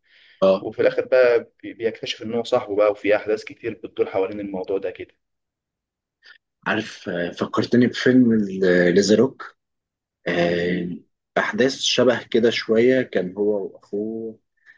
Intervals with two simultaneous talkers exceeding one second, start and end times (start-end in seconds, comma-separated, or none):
none